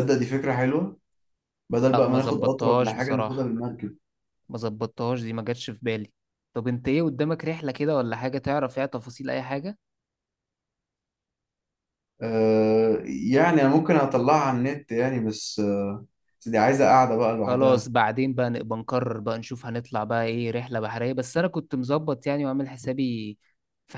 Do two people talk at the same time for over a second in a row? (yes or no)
yes